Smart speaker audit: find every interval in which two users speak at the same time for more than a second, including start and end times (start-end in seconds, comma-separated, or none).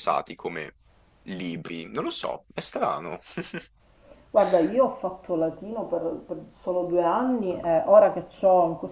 none